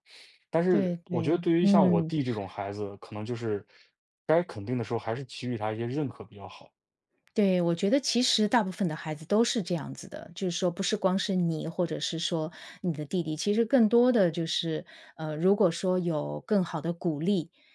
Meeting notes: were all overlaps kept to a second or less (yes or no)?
no